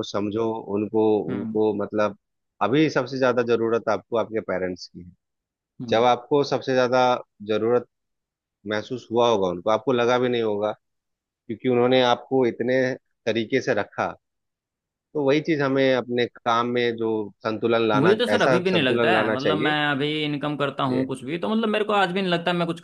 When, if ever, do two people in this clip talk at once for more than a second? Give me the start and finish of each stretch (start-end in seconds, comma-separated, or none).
17.9-19.7